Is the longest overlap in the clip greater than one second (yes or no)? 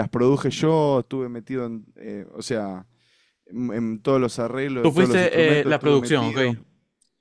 yes